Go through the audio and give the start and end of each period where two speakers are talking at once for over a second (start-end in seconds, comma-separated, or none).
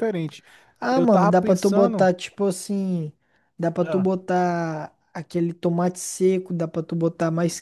0.9-2.1